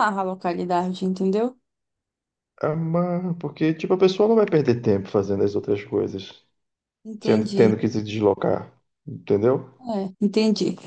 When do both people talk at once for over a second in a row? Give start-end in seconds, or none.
none